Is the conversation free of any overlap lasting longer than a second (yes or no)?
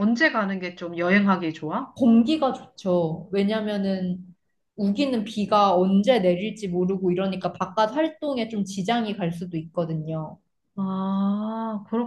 yes